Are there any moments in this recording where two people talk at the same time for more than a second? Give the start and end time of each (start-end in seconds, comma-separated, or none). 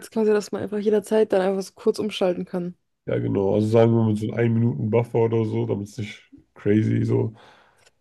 none